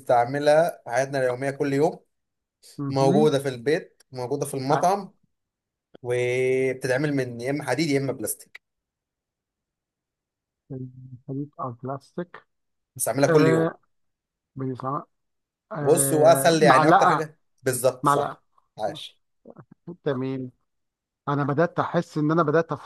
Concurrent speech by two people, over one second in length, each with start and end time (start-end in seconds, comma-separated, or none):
15.8-17.3